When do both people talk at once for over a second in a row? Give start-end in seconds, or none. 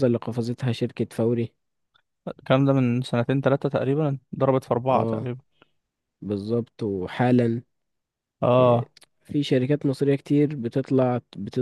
none